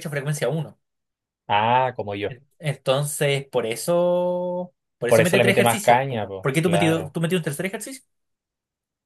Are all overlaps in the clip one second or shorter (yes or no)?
no